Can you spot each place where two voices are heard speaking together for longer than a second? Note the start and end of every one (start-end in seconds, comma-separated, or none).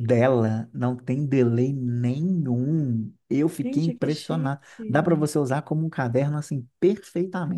3.6-5.2